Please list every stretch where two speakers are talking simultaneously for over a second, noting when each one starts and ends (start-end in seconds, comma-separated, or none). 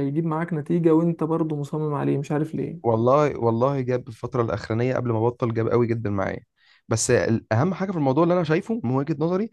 none